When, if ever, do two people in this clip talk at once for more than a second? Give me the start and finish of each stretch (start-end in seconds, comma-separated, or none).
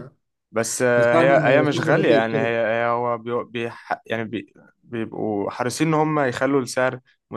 1.0-2.5